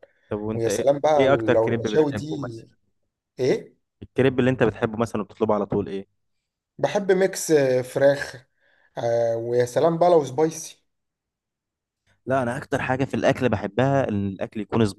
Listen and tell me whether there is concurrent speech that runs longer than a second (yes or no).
yes